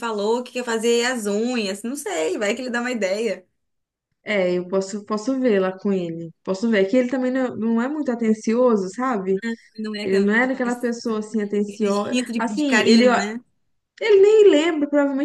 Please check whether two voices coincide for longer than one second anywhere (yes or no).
yes